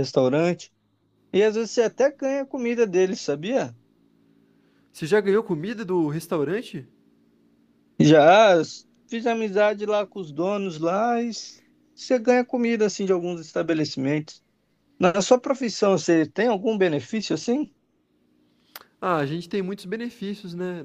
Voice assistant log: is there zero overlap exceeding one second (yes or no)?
yes